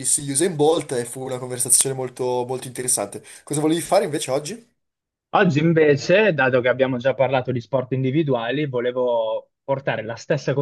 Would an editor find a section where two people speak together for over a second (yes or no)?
no